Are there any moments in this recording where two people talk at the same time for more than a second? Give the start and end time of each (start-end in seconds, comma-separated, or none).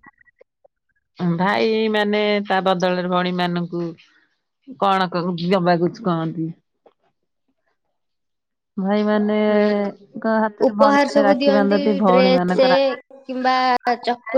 10.7-12.7